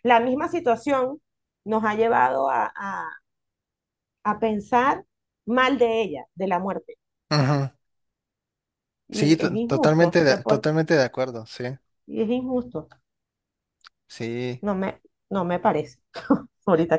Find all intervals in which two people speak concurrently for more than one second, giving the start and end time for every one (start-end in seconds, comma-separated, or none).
9.1-10.7